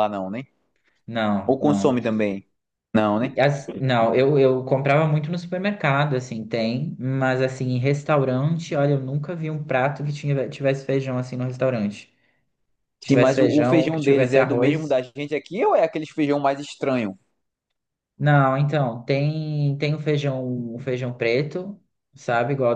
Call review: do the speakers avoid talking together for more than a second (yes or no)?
no